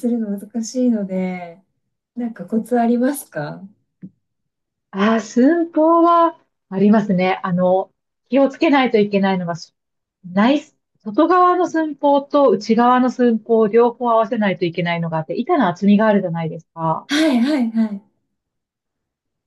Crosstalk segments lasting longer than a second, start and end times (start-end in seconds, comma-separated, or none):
none